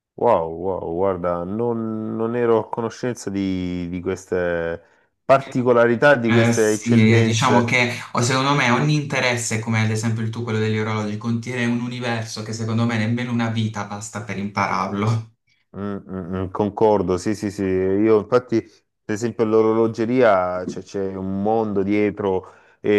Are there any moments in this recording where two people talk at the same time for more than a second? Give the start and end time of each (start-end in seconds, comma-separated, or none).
6.3-7.8